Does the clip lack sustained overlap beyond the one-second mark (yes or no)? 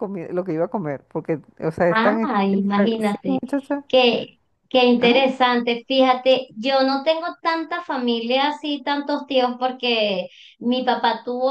no